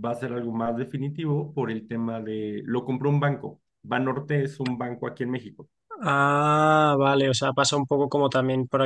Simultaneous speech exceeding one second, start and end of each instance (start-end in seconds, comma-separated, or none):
none